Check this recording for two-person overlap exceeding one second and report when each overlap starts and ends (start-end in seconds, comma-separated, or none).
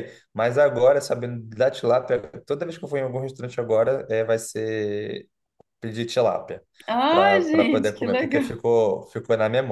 7.1-8.6